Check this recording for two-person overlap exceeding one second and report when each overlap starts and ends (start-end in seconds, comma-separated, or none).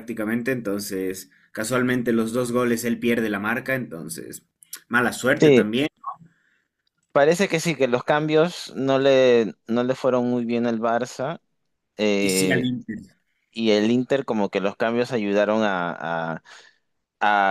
none